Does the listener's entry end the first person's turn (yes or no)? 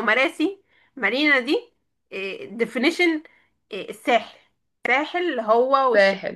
no